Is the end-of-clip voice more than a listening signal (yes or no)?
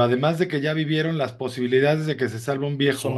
no